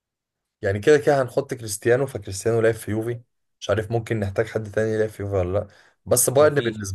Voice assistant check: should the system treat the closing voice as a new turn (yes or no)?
no